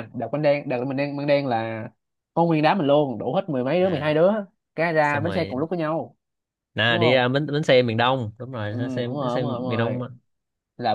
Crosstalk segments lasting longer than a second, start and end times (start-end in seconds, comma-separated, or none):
8.7-10.0